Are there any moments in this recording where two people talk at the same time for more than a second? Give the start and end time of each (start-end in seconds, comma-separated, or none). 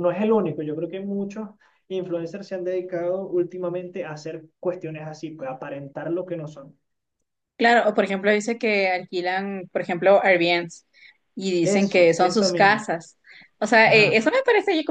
11.6-12.8